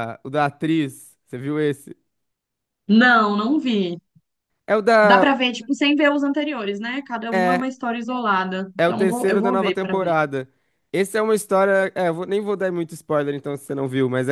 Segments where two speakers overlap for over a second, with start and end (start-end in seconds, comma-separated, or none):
8.8-10.1